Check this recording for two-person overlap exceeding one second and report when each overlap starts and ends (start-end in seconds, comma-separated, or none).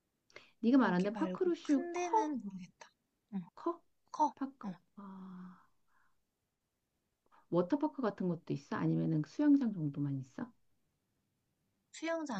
0.8-2.4